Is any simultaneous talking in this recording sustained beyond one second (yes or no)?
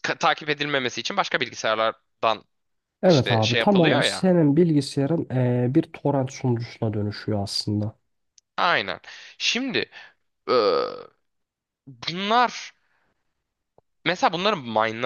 yes